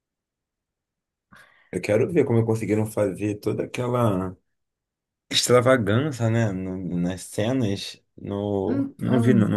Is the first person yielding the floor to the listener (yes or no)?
no